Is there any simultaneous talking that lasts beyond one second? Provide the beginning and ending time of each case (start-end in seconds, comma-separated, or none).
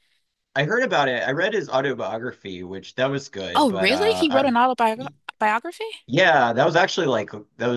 3.5-5.1